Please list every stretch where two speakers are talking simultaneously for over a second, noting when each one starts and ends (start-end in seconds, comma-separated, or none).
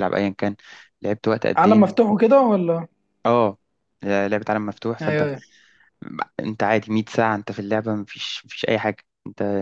none